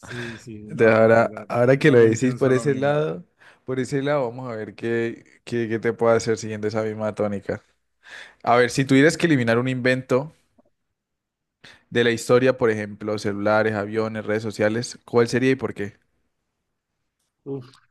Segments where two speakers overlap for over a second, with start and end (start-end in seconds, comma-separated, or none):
0.7-3.0